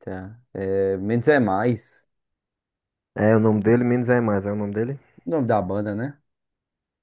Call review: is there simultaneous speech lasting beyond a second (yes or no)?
no